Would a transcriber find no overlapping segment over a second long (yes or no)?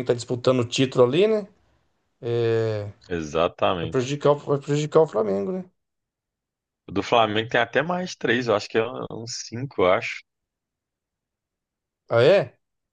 yes